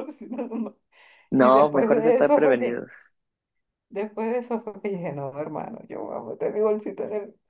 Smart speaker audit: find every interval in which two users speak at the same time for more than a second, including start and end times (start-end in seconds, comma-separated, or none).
1.4-2.9